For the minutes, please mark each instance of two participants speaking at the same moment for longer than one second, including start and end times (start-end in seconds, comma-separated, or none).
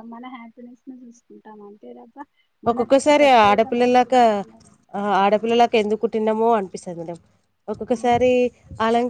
none